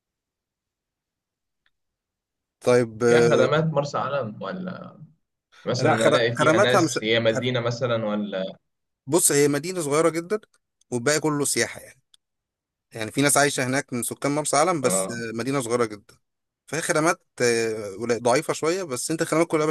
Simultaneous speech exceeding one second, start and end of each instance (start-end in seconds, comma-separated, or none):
5.8-7.5